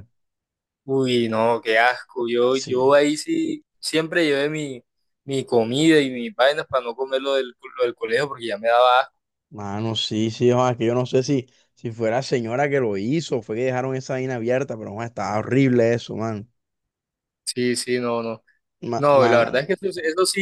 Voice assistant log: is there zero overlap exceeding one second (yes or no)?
yes